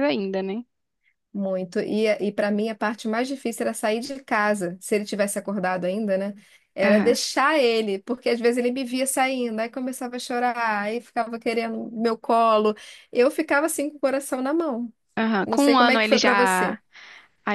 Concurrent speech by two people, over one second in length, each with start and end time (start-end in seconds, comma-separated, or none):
15.4-16.8